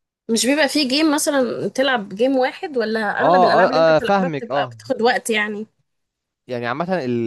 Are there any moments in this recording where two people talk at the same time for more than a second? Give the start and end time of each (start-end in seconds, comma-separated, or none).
3.2-4.8